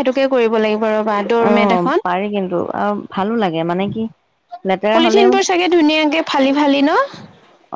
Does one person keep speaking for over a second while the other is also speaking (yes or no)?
no